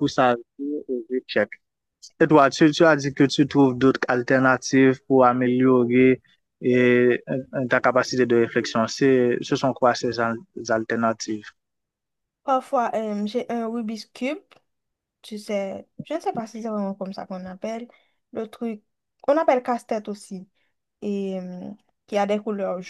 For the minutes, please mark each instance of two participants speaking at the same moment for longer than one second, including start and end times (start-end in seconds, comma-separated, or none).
none